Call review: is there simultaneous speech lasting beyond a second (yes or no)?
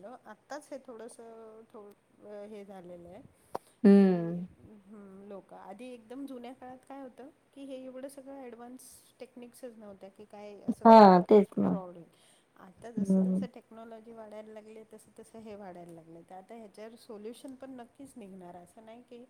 no